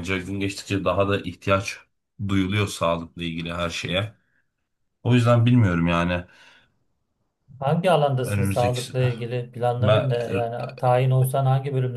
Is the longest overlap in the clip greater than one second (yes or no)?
no